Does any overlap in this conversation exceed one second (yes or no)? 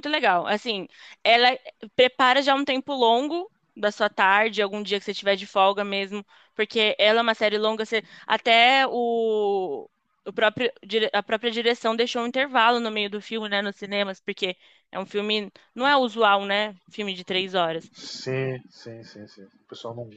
no